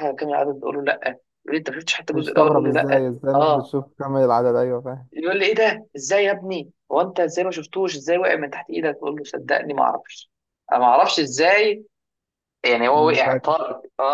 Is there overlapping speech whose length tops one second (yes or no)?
yes